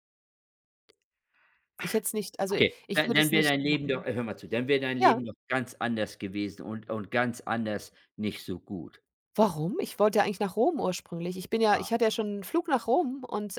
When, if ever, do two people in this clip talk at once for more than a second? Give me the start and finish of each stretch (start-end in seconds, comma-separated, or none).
2.5-4.1